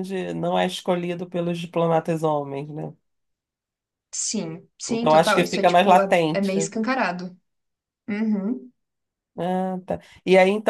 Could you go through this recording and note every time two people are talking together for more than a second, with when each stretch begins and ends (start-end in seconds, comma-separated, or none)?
4.9-6.6